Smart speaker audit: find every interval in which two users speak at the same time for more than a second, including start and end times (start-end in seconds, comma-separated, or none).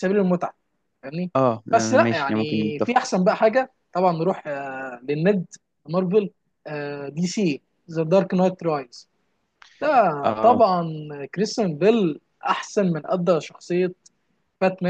1.7-3.1